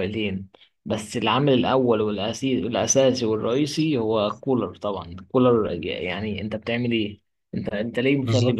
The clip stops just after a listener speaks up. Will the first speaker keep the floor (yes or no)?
yes